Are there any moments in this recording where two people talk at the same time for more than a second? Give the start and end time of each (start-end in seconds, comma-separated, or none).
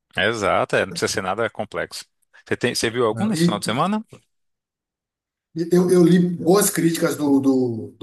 none